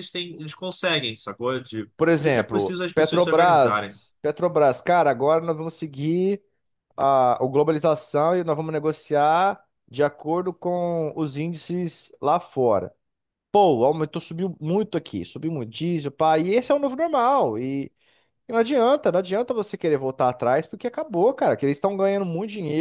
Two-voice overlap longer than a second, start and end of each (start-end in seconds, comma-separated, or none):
2.0-4.0